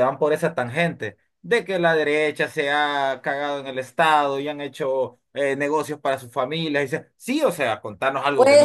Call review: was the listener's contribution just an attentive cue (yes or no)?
no